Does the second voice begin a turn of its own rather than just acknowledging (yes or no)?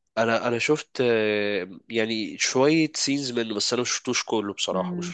yes